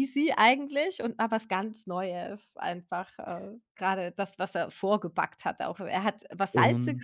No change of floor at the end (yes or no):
yes